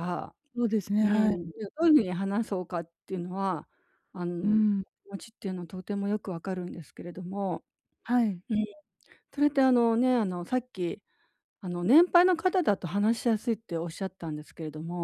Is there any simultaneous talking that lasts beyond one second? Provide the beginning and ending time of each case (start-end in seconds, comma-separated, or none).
none